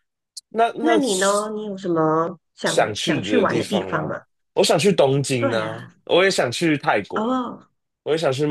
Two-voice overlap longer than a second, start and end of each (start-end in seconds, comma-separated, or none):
2.6-4.1